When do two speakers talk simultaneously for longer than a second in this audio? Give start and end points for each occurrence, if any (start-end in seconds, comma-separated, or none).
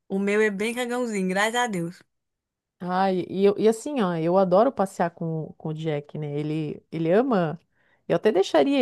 none